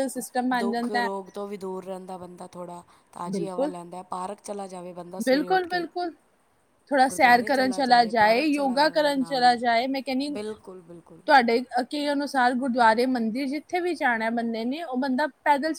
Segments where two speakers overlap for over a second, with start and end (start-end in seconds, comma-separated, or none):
7.1-9.6